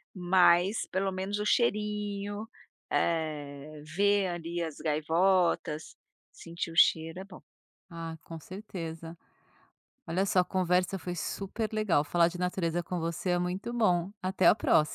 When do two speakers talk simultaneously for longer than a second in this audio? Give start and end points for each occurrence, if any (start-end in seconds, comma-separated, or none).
none